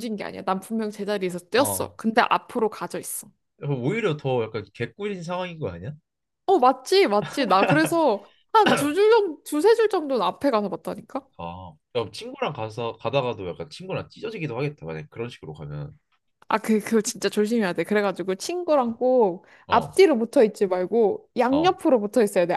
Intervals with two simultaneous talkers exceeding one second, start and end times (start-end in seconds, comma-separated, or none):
none